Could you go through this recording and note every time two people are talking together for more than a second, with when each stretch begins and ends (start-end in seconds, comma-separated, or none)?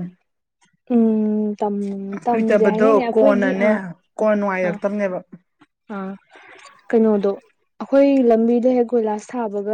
2.3-3.7